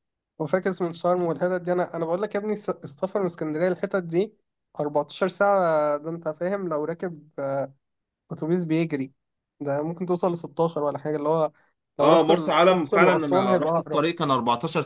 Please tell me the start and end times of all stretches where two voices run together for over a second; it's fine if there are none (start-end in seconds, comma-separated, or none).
12.0-14.0